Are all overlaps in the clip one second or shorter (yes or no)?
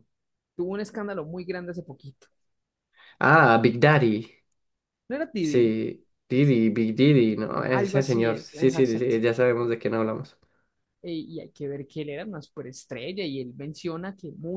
no